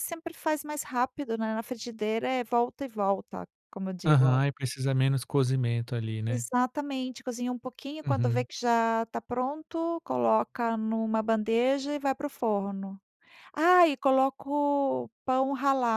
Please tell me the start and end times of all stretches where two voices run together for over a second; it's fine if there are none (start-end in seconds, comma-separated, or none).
none